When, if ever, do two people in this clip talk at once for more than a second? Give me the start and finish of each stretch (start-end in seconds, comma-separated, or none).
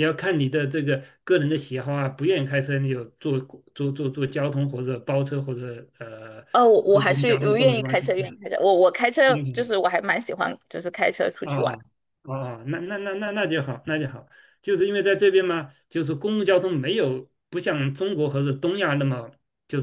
6.9-8.1